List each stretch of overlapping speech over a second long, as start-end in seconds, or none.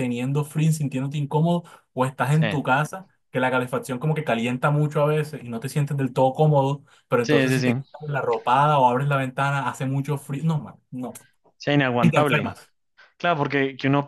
none